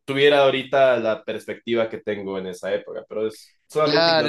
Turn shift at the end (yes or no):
yes